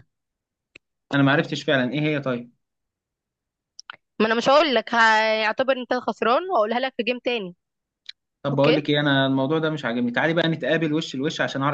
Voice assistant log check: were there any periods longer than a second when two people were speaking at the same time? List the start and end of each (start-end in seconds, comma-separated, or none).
none